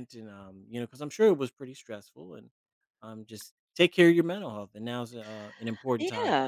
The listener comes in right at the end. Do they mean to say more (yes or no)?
yes